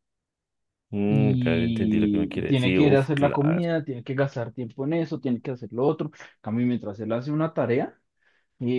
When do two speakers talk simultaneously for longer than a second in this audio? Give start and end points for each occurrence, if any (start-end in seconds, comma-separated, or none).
1.1-3.6